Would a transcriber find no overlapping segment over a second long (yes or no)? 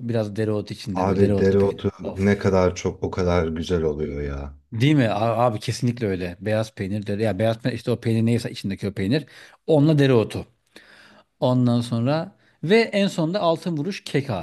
no